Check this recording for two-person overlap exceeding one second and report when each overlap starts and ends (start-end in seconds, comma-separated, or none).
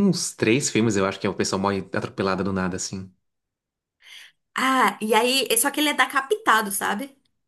none